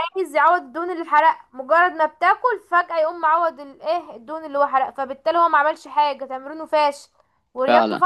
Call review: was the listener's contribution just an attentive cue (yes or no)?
yes